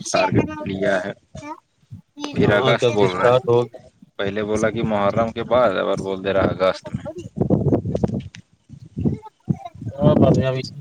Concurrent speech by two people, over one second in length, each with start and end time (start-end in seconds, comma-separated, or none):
2.3-3.8